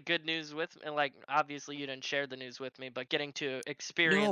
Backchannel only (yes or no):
no